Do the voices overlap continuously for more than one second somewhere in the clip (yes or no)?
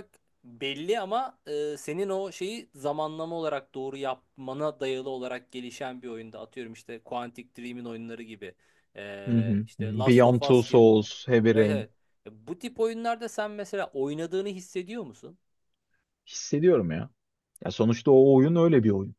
yes